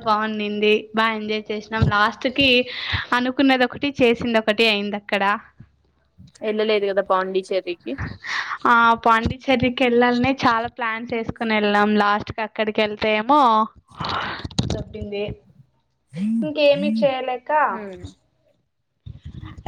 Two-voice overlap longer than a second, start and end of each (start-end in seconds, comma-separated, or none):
none